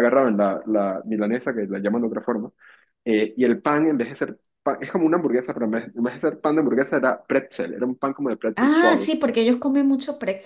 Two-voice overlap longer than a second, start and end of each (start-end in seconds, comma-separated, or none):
none